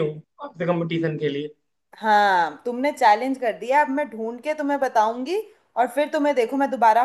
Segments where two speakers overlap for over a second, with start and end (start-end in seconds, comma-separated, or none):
none